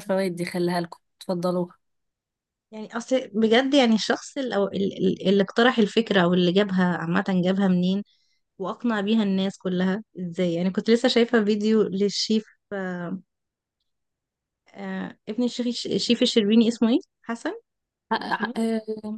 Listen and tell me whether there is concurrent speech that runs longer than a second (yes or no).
no